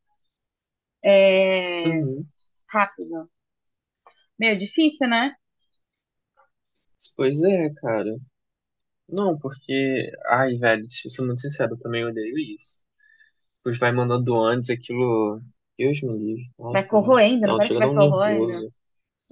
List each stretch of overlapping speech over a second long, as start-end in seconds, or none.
16.7-18.5